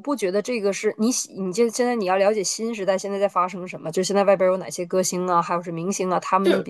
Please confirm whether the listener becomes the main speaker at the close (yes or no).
no